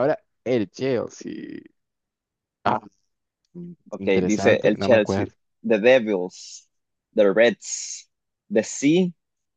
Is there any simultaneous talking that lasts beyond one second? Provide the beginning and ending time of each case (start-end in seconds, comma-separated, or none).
3.9-5.3